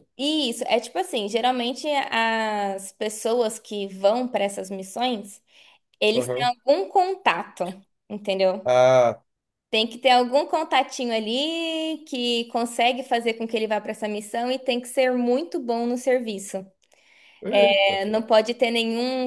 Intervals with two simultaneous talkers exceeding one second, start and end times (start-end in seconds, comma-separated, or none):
none